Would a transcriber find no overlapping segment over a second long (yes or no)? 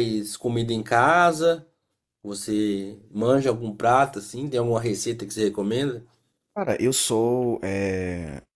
yes